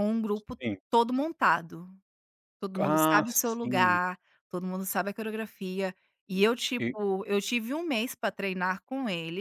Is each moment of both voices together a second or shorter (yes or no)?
no